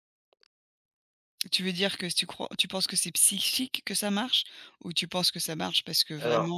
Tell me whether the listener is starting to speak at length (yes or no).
no